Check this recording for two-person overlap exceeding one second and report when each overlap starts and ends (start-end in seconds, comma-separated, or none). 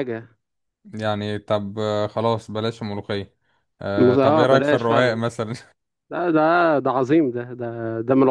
4.0-5.2